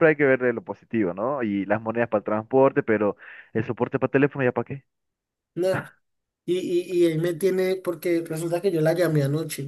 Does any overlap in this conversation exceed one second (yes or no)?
no